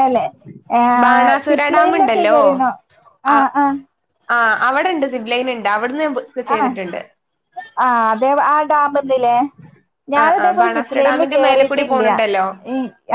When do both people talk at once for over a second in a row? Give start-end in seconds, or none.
10.2-12.0